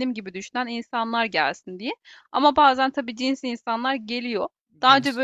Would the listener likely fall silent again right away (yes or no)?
yes